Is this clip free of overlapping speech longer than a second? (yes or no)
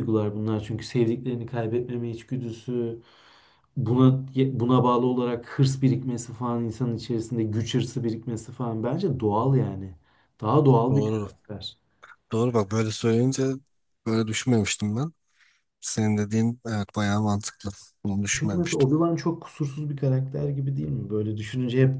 yes